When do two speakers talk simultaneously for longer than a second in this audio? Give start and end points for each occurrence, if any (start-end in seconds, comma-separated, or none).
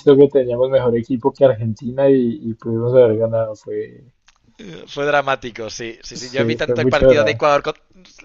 6.1-7.4